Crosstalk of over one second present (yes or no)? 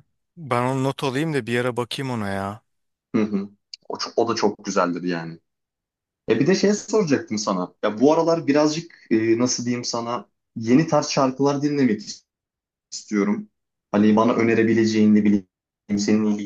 no